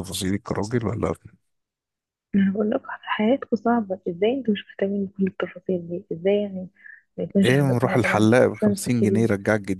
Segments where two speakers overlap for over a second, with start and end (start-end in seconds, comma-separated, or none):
7.4-9.3